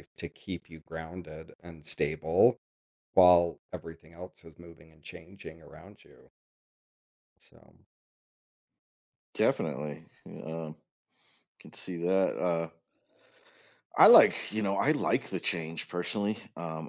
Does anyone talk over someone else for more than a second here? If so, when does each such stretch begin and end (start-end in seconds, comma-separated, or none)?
none